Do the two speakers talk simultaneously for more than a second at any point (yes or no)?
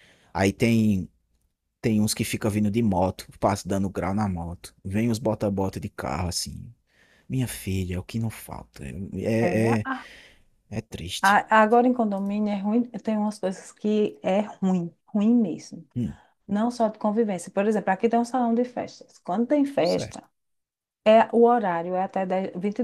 no